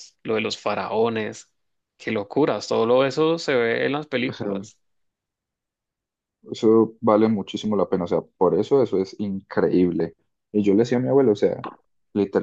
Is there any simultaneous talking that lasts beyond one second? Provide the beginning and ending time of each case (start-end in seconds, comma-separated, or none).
none